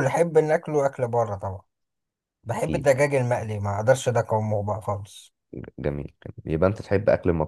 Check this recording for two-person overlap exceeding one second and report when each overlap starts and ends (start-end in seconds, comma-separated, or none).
none